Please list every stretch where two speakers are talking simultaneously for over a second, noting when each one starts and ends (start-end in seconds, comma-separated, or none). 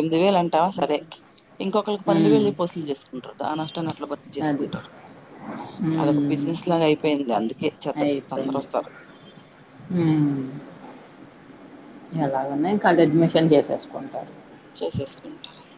none